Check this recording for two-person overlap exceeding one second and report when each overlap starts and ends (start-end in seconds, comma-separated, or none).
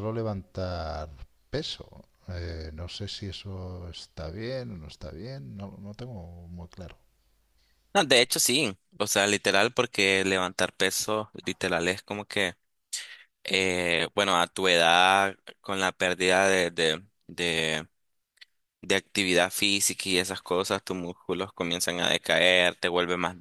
none